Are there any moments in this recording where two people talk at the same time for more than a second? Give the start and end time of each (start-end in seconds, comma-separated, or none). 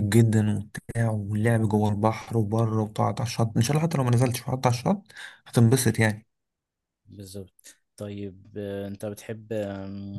none